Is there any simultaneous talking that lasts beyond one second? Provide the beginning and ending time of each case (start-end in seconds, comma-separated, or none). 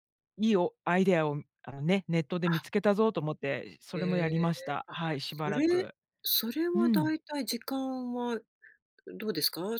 3.9-5.9